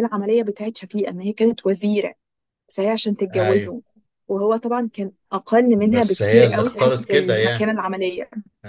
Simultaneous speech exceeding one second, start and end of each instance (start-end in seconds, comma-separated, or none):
5.8-7.7